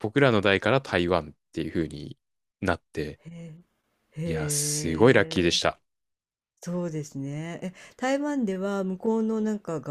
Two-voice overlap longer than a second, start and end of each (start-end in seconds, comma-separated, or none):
4.2-5.7